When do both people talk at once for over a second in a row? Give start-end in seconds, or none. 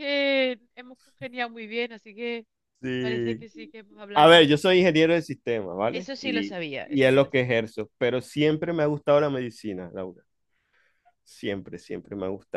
5.9-7.4